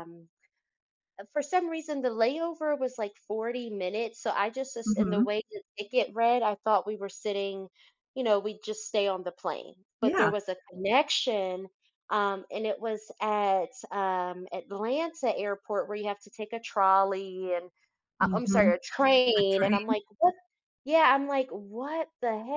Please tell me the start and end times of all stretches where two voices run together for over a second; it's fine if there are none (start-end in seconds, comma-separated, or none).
none